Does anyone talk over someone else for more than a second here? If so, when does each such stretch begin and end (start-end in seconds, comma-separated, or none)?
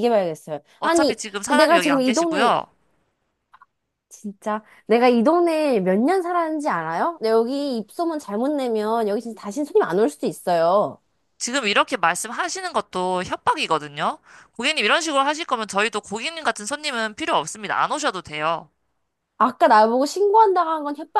0.8-2.6